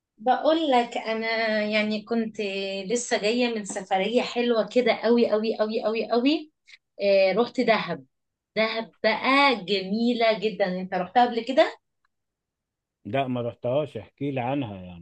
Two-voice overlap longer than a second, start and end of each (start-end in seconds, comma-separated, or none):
none